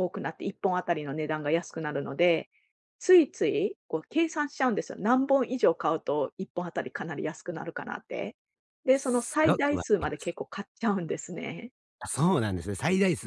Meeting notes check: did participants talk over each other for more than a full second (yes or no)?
yes